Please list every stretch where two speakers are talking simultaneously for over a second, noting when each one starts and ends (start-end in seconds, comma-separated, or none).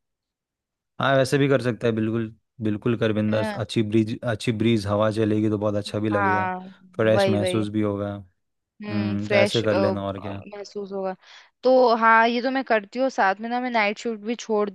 8.8-10.4